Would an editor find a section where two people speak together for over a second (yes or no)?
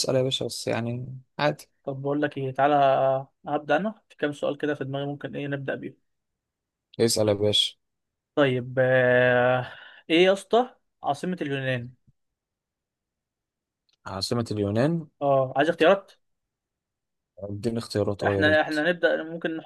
no